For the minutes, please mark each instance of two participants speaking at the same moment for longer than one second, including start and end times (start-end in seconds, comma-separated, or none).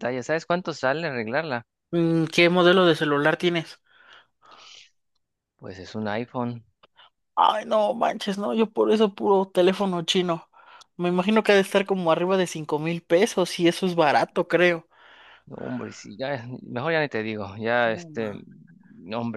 none